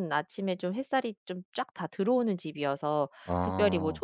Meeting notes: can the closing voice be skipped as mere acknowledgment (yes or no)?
yes